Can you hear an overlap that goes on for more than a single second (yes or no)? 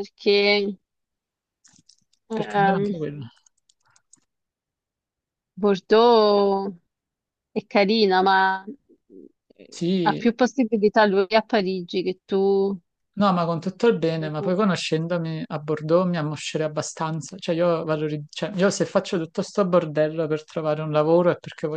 no